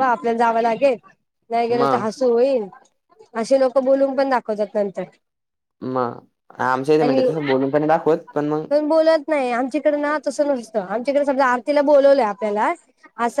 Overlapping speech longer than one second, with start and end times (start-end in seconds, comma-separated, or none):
none